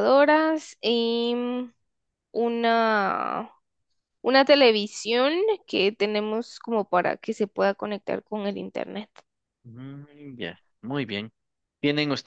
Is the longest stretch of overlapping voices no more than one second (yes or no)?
yes